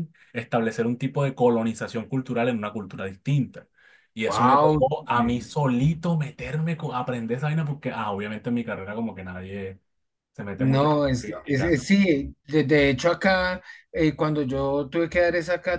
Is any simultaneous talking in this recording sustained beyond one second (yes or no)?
yes